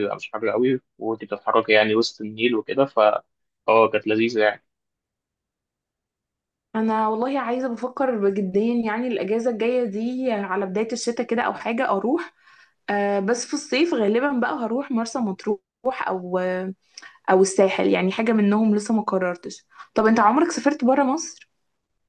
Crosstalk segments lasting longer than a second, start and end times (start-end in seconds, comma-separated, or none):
none